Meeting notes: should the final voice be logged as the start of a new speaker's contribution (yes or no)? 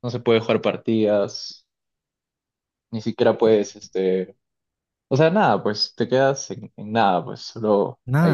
yes